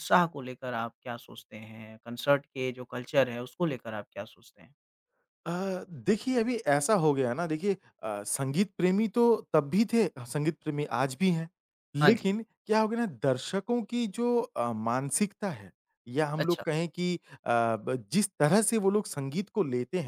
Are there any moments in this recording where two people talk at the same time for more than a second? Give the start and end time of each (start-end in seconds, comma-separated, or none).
none